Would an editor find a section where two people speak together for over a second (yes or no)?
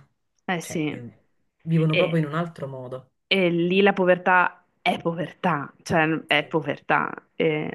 no